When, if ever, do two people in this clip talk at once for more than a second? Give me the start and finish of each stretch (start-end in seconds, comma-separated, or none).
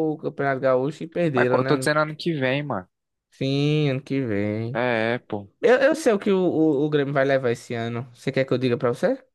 none